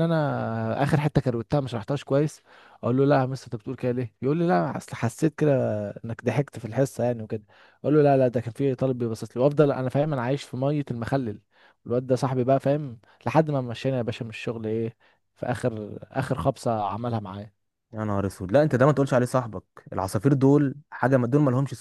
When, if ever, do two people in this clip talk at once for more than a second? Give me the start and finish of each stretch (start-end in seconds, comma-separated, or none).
none